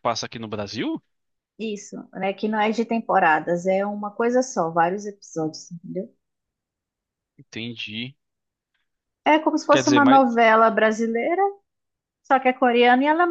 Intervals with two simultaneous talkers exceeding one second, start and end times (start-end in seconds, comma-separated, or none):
none